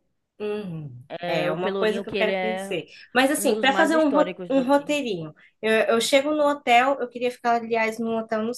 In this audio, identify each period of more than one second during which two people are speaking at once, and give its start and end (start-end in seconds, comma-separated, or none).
1.1-2.8, 3.4-4.9